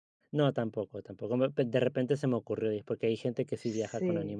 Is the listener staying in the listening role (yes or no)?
no